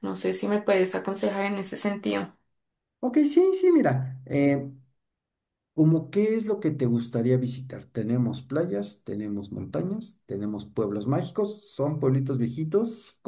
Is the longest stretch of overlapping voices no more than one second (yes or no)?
yes